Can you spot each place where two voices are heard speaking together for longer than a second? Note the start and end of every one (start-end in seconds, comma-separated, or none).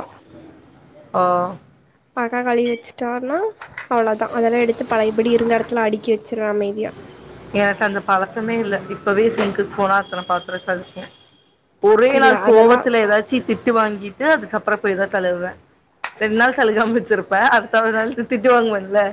none